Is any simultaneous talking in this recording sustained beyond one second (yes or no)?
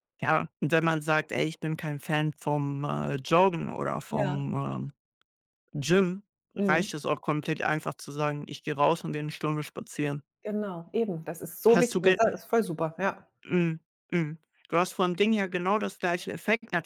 no